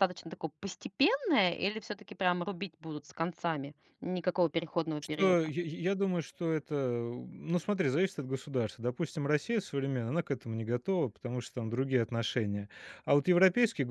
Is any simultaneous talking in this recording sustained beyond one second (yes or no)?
no